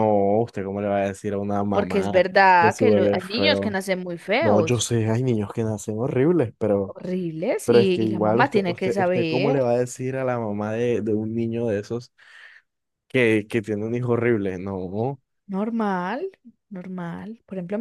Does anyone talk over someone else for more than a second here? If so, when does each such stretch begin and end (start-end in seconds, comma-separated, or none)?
1.7-3.8, 7.7-9.8